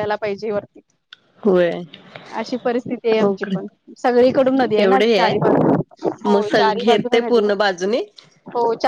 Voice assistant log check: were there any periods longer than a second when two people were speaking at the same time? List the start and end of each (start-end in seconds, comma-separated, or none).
6.3-7.9